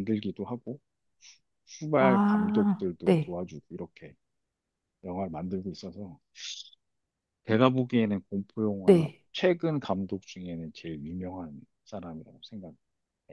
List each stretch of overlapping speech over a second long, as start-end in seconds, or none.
2.0-3.4